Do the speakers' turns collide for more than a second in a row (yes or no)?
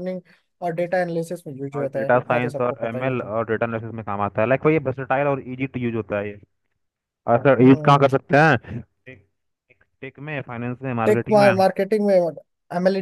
yes